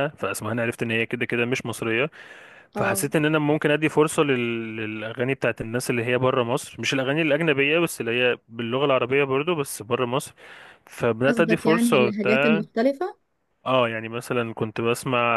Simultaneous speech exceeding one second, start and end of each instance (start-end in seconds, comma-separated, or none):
11.3-12.6